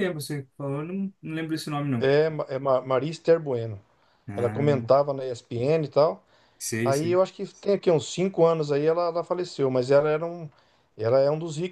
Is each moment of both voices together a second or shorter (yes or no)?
yes